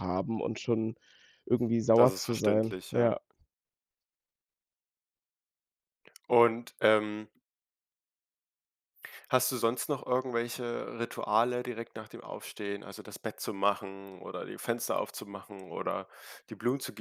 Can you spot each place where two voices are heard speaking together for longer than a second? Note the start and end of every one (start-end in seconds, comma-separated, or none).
2.0-3.2